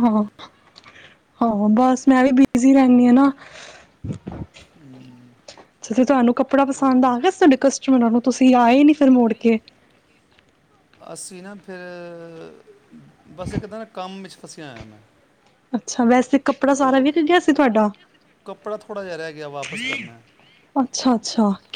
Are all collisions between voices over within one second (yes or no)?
yes